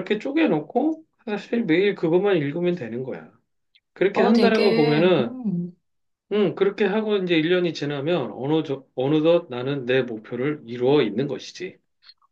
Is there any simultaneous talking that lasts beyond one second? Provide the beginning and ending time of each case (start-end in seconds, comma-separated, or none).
4.1-5.3